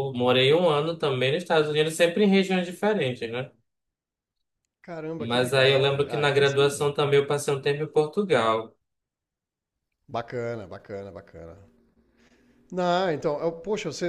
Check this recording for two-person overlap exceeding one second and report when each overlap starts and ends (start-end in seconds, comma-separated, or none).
5.2-6.7